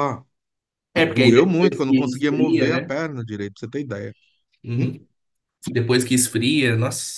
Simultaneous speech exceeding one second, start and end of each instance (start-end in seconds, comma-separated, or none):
1.0-2.9